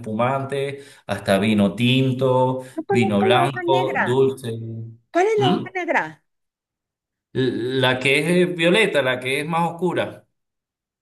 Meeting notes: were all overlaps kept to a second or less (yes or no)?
no